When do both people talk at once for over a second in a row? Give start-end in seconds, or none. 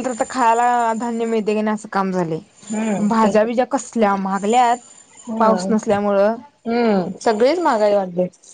none